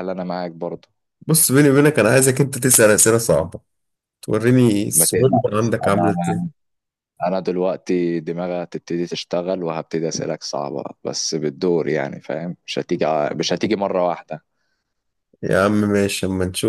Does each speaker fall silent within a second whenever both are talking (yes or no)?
no